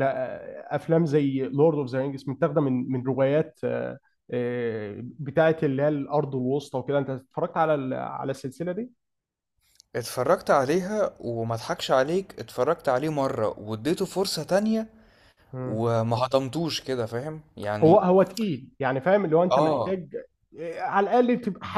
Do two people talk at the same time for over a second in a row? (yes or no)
no